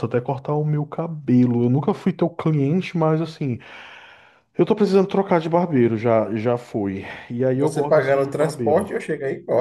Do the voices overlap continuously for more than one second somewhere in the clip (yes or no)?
yes